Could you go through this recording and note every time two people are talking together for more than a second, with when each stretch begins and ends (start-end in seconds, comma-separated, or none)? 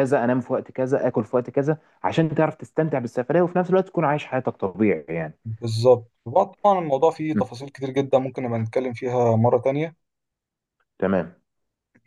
none